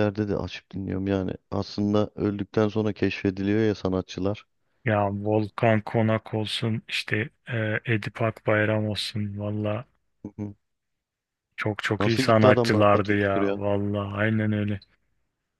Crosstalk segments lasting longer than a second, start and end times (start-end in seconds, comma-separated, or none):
12.0-13.6